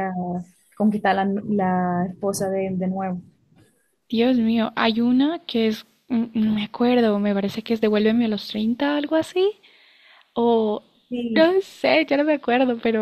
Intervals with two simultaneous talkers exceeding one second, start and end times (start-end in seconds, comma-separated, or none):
none